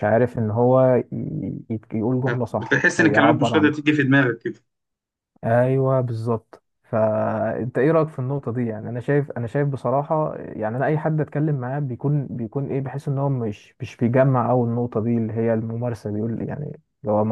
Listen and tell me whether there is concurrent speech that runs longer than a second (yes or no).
yes